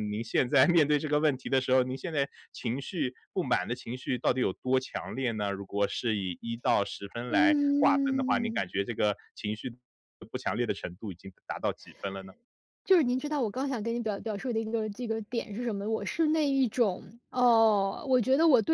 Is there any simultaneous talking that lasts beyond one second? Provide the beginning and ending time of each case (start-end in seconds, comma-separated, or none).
7.3-8.7